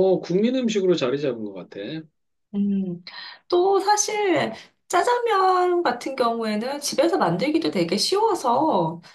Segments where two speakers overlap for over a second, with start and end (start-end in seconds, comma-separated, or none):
none